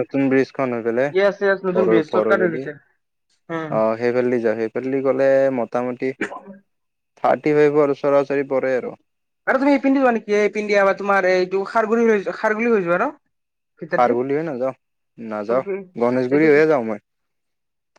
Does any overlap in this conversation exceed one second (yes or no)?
yes